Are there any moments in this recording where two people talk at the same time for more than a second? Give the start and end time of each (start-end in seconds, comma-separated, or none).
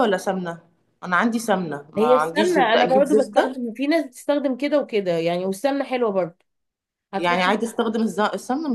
2.0-3.6